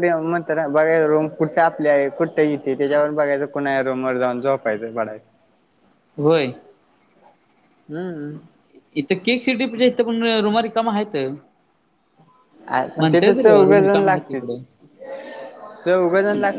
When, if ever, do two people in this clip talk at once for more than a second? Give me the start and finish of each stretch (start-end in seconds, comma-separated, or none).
13.0-14.4